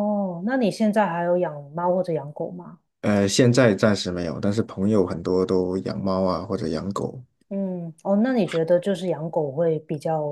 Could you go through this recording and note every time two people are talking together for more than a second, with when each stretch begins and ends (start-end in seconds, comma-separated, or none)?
none